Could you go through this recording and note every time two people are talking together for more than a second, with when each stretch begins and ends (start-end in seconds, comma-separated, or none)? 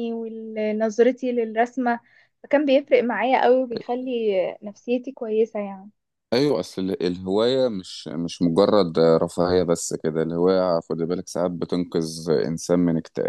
none